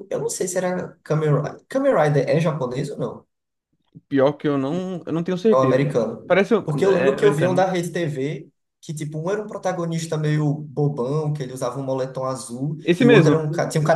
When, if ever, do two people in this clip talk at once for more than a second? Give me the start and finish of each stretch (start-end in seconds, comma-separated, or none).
5.5-7.7